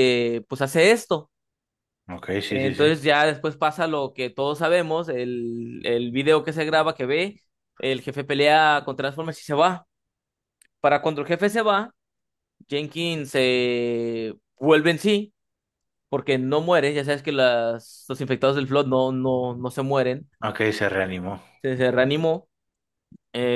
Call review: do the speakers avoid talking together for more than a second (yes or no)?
yes